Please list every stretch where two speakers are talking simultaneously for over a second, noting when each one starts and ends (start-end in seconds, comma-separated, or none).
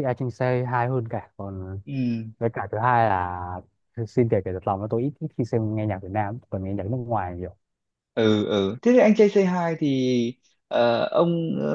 none